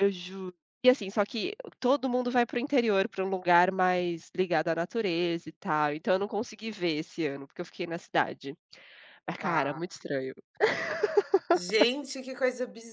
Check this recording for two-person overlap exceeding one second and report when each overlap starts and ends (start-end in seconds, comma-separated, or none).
none